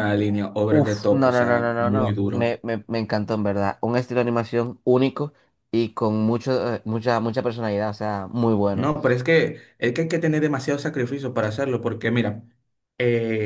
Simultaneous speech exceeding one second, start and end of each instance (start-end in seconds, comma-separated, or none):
0.7-2.5